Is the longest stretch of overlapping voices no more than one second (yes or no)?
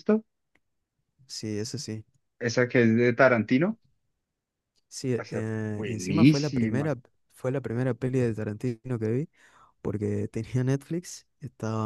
no